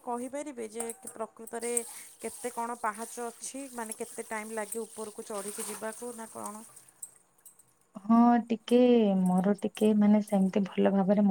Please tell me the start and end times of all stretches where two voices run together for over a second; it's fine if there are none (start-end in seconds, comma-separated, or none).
none